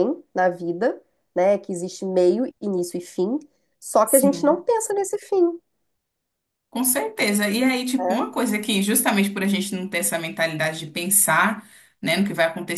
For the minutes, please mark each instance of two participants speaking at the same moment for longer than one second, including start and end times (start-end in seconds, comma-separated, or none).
none